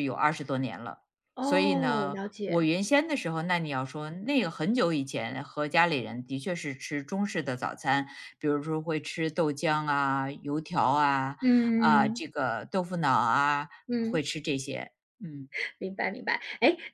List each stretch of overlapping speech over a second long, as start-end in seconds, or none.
1.4-2.7